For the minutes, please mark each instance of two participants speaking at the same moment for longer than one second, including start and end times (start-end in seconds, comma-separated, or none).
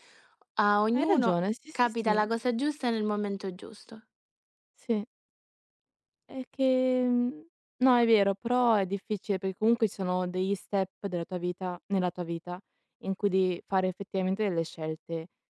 0.9-2.2